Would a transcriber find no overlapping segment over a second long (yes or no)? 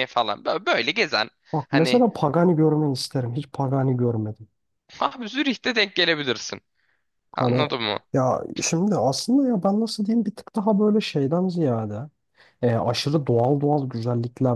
yes